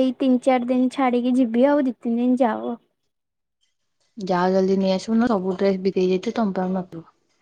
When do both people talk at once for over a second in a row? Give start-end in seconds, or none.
none